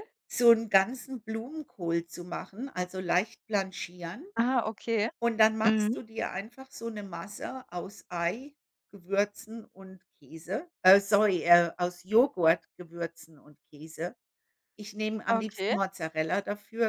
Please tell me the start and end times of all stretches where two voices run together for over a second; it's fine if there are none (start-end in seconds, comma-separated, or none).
none